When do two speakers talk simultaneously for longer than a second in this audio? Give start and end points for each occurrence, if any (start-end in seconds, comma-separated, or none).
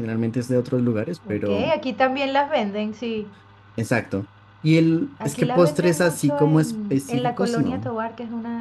5.2-7.9